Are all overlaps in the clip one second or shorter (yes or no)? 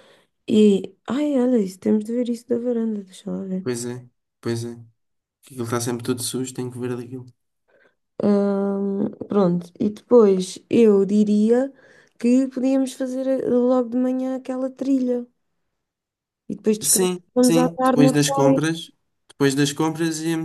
no